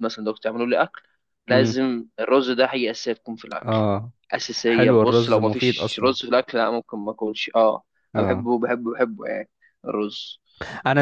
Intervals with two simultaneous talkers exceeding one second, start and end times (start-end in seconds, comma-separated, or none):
4.7-6.2